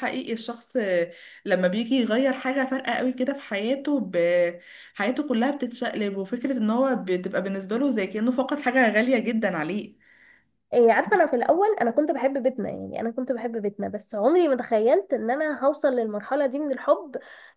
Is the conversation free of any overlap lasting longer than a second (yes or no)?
yes